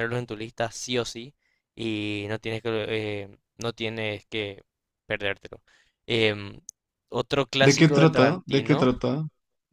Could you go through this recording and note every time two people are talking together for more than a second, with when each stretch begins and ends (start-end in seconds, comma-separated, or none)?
7.6-8.9